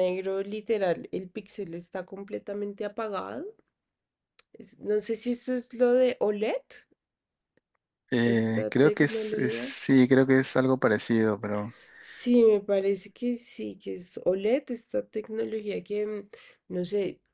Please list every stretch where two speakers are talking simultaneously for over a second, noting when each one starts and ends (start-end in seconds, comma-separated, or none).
8.2-9.7